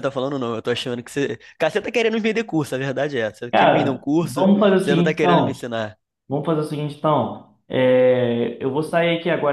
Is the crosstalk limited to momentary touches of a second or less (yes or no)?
no